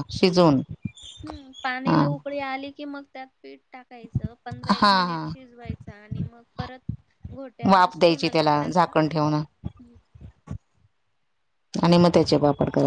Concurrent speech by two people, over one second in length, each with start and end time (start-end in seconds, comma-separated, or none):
7.7-9.3